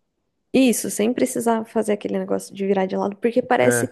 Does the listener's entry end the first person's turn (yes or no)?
no